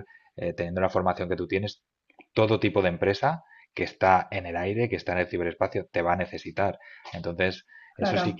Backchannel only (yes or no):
yes